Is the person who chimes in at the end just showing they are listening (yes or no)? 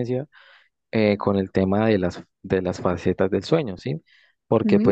yes